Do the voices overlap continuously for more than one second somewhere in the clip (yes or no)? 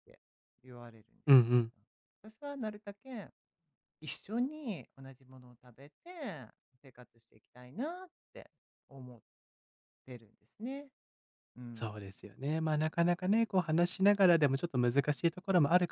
no